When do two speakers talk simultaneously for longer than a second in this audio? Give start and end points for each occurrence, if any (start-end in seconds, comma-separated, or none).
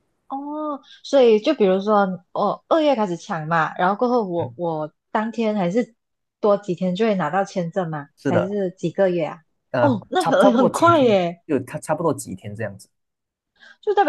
9.8-11.4